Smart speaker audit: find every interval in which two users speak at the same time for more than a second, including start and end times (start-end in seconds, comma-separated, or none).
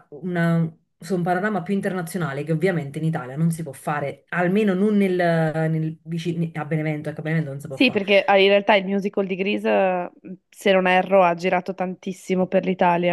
none